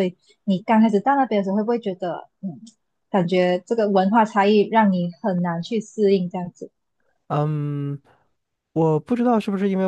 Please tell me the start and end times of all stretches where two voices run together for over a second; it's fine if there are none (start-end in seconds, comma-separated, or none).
none